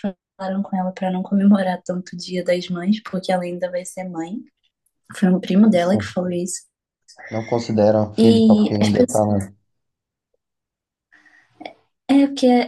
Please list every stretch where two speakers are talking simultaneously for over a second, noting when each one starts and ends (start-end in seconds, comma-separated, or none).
8.2-9.4